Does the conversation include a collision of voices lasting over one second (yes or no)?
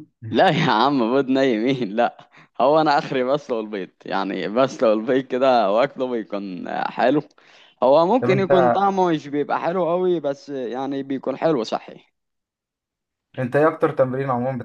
no